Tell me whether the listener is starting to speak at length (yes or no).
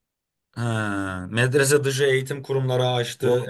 yes